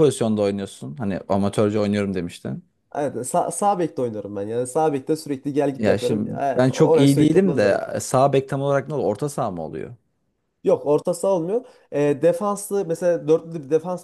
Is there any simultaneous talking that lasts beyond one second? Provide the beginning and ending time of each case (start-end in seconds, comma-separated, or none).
5.8-7.8